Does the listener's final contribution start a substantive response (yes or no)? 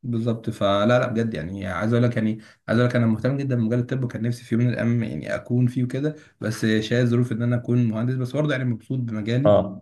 yes